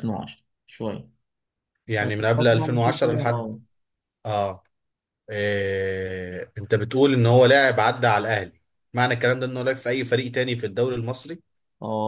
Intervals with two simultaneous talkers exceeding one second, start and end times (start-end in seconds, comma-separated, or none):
2.0-3.5